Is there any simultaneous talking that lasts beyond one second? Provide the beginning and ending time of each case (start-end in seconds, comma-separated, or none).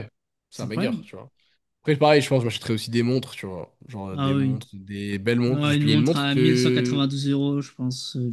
5.5-7.0